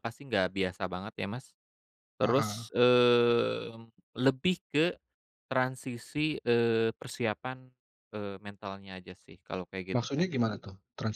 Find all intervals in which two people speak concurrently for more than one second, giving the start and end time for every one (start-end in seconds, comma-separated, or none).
none